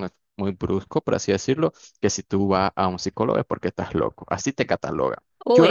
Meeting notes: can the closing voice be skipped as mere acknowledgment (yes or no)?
no